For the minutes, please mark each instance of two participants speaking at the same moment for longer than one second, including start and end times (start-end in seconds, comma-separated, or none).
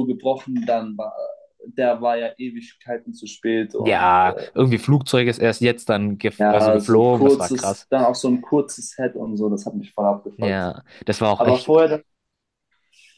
6.4-7.9